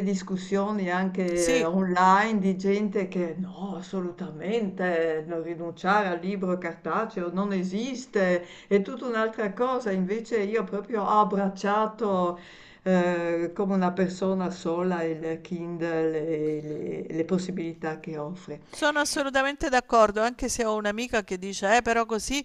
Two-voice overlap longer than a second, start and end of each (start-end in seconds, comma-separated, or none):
none